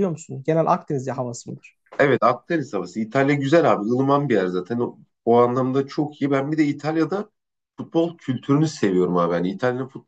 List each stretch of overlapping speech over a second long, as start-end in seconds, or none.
none